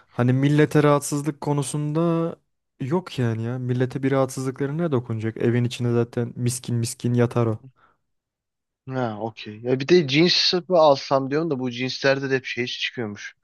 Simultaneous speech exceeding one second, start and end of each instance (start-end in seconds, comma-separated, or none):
none